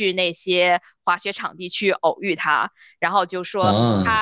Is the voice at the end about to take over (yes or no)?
no